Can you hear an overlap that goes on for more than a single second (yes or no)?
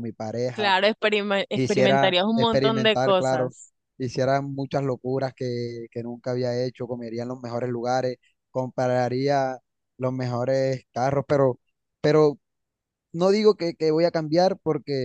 yes